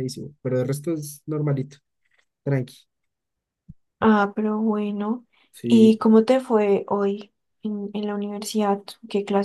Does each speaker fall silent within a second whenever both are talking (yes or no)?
yes